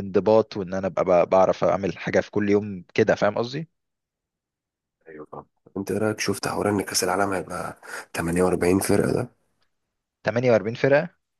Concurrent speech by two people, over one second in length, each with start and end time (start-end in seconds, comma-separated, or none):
none